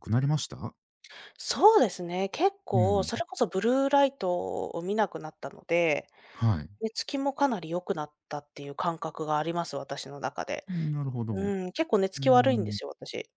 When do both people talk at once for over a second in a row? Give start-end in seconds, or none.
none